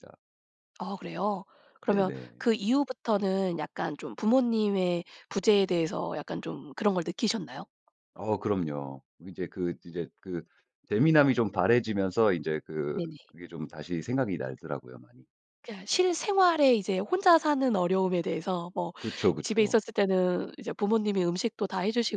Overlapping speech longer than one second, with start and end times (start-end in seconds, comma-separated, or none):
none